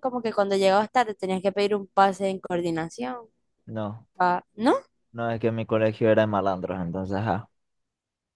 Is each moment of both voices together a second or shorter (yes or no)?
yes